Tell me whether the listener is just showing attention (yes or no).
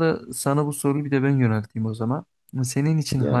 yes